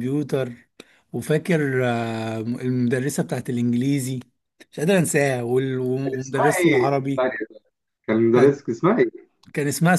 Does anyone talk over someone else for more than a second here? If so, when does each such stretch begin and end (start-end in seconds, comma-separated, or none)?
6.0-7.3